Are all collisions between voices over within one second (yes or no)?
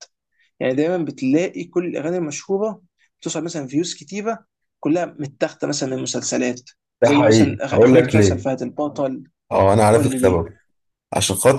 no